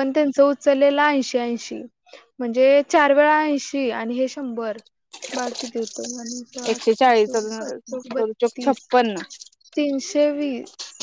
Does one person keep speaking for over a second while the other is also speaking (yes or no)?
yes